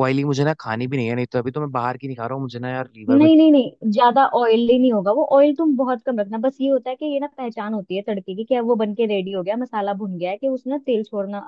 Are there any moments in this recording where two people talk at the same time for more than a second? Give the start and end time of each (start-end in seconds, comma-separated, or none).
none